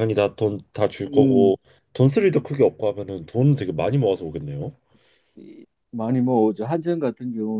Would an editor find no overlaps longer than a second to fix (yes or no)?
yes